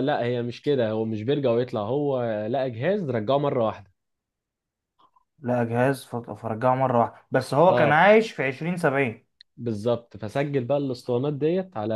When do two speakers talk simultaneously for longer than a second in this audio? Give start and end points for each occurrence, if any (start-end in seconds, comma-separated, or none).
none